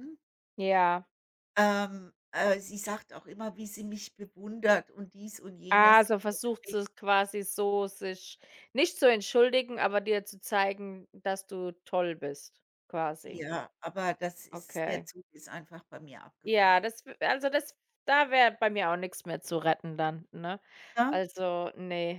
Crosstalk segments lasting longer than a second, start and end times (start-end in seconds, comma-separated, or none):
none